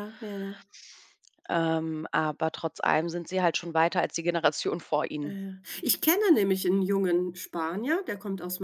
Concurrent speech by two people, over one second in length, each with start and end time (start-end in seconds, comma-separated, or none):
none